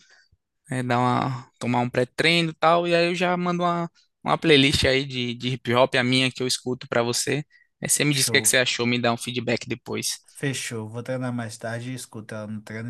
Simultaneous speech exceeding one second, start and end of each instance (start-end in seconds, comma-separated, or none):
none